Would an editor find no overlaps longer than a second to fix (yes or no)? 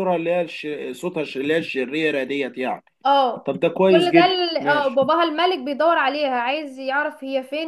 no